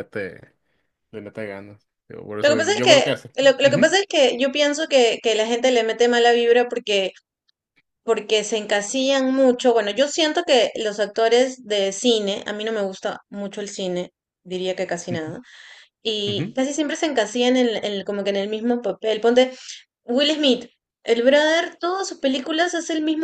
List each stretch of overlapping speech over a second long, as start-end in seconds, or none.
2.4-3.9